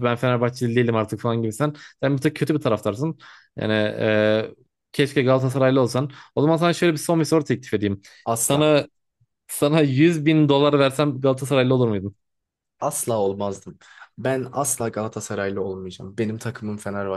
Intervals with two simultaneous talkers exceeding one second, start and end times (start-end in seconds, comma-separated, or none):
none